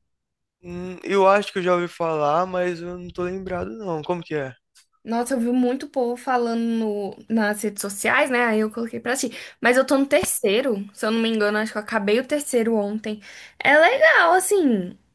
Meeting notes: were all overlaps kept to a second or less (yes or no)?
yes